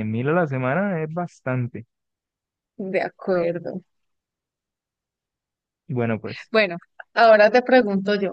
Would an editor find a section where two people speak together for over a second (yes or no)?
no